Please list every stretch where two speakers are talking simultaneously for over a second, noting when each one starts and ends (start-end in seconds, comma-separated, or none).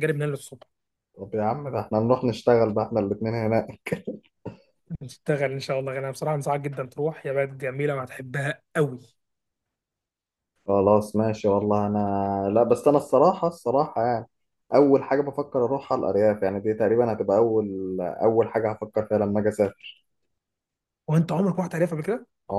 none